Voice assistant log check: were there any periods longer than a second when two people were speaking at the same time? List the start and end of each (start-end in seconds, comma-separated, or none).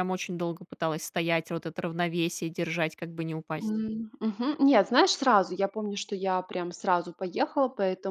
none